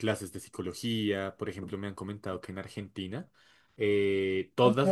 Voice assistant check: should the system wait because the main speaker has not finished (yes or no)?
yes